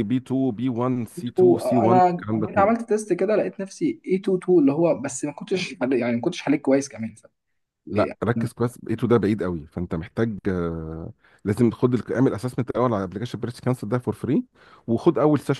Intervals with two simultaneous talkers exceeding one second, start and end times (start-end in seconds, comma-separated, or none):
1.2-2.9